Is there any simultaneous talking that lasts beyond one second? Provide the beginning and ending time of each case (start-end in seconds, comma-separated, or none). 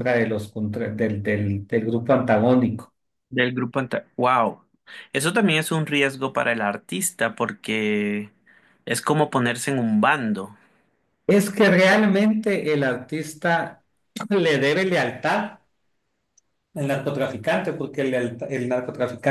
none